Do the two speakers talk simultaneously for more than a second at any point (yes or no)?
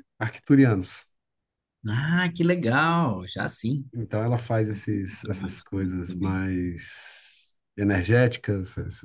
yes